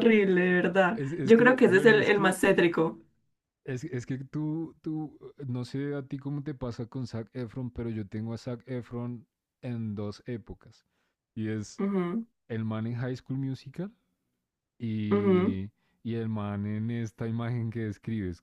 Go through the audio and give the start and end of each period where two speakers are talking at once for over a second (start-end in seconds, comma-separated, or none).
0.9-2.4